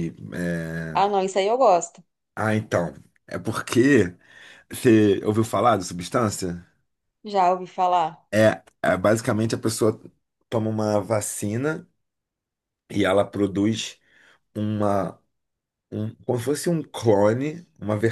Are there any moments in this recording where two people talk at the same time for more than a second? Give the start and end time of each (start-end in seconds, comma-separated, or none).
none